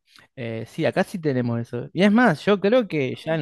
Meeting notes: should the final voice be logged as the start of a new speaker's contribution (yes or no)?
no